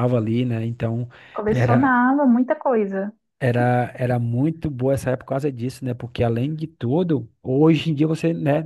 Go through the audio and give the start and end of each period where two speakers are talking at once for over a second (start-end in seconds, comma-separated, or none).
none